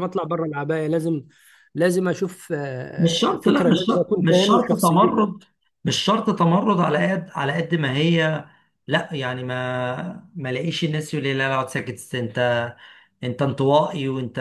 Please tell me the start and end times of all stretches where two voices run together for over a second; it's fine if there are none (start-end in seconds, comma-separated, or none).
3.0-5.2